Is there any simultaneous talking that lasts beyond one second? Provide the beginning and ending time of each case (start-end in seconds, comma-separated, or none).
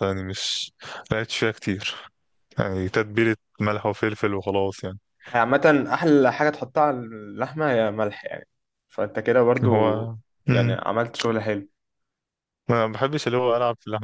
none